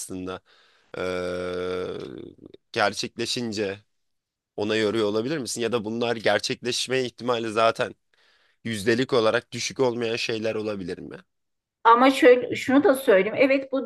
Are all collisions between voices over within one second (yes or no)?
yes